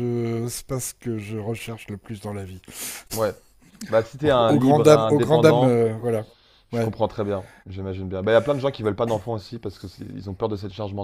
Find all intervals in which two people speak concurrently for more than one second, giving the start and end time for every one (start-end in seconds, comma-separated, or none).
4.2-5.9